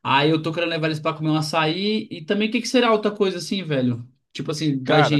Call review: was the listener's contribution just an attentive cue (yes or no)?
no